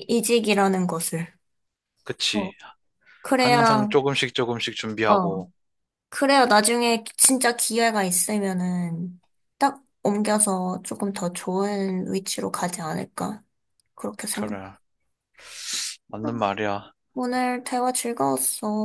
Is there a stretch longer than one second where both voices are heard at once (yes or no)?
no